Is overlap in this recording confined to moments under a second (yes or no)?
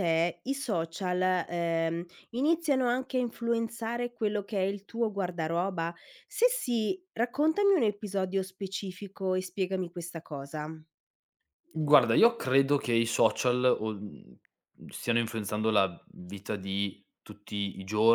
yes